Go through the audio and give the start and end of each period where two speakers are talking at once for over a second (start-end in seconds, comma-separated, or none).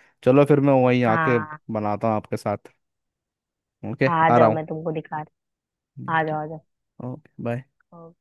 none